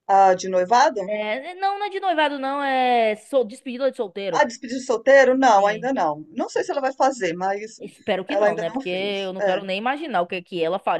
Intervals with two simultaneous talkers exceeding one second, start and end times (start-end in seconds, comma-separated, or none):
8.3-9.6